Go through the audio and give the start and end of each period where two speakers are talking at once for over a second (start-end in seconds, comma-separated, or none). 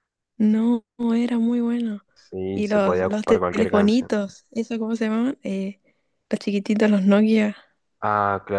2.5-4.1